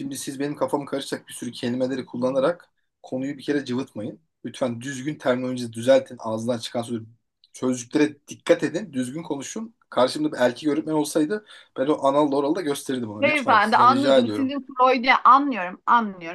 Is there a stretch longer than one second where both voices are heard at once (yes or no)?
yes